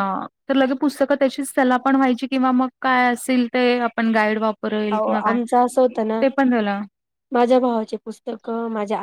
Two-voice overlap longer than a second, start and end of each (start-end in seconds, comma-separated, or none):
none